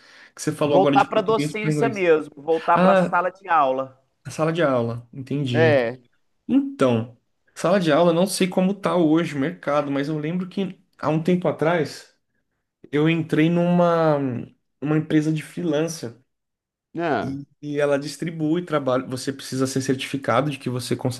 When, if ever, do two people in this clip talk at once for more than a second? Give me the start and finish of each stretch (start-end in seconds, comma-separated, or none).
0.7-2.1